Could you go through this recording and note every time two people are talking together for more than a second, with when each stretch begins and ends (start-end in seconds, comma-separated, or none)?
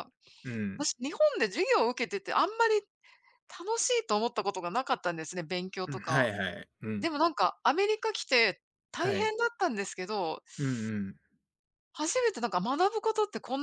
none